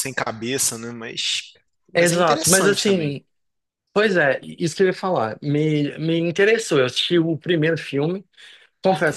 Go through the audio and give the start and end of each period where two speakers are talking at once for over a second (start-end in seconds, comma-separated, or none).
1.9-3.2